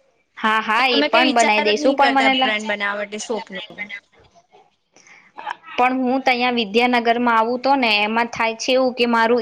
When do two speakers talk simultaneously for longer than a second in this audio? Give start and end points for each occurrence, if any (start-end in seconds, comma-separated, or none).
0.8-2.5